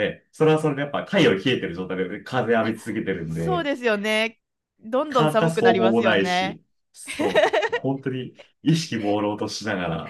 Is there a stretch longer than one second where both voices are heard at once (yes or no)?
yes